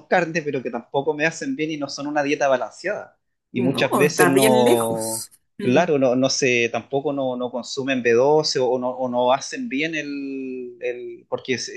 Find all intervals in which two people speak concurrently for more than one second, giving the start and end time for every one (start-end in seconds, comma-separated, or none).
3.6-5.9